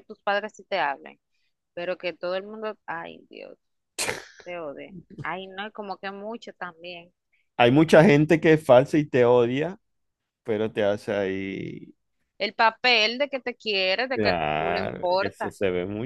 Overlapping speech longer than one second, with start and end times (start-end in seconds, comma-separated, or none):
14.1-15.6